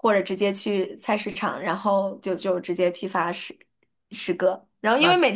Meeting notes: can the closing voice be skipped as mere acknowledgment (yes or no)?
yes